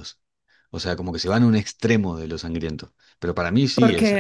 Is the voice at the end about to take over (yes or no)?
yes